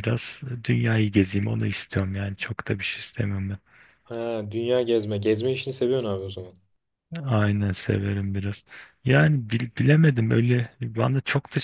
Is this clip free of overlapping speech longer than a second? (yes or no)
yes